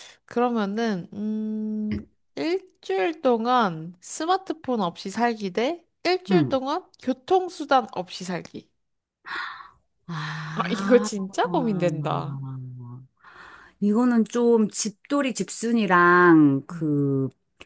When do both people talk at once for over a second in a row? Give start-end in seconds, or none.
none